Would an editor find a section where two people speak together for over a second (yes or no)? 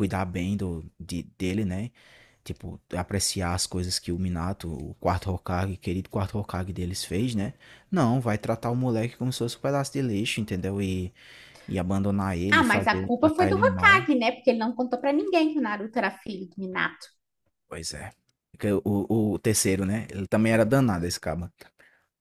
yes